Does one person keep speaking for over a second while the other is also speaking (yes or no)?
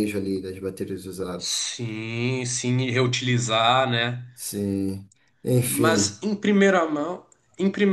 no